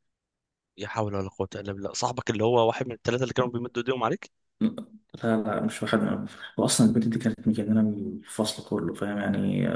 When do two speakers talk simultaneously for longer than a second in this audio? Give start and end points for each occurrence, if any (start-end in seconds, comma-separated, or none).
none